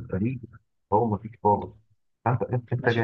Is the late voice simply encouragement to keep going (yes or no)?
yes